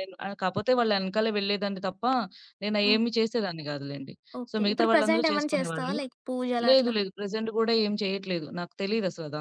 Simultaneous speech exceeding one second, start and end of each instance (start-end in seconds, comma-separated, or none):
4.5-6.0